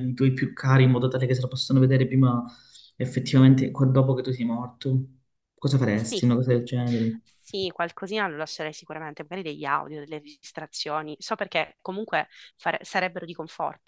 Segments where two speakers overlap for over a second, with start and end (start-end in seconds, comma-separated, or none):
none